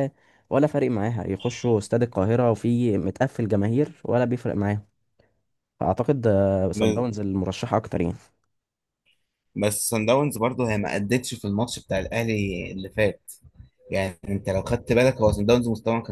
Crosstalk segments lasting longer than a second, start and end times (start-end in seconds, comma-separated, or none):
none